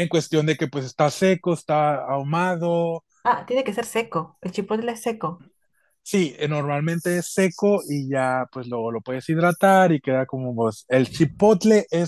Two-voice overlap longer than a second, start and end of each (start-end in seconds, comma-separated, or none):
none